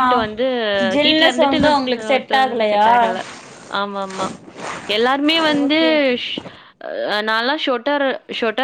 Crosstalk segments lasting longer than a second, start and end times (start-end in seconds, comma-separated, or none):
1.0-2.9